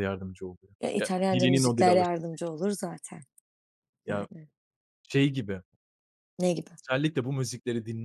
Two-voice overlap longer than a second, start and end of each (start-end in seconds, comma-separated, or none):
0.8-2.5